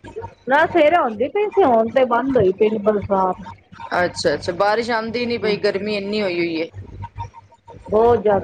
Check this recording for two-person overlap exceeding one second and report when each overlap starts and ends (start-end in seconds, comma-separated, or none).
none